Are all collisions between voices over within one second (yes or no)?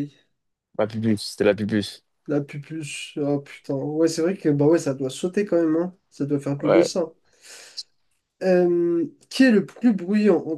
yes